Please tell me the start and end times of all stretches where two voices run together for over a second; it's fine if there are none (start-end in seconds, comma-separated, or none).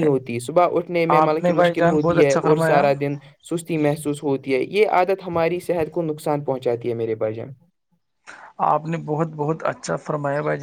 1.2-2.8